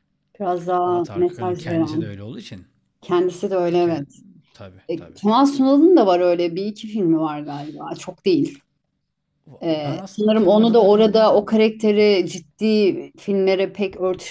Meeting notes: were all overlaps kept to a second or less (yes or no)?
no